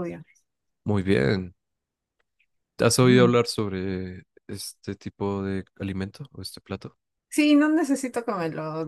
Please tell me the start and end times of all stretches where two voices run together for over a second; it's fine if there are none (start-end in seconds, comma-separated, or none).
none